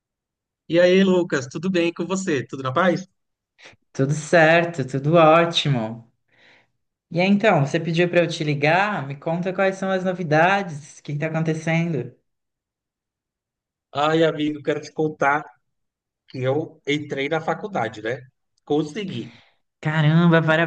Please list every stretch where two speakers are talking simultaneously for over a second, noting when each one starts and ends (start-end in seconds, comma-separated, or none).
none